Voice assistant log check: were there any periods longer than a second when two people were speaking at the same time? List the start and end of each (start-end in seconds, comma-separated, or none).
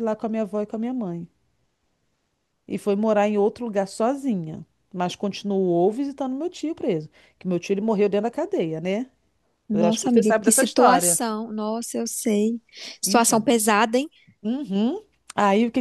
9.7-11.2